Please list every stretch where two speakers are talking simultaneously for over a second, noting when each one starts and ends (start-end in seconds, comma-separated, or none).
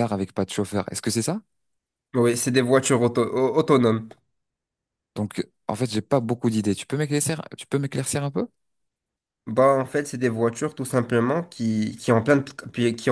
none